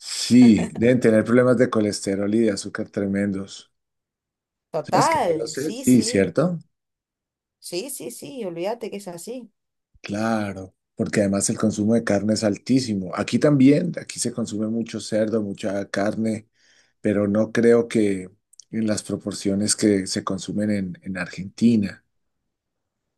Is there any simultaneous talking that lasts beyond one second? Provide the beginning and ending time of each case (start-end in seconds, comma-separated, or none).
4.8-6.3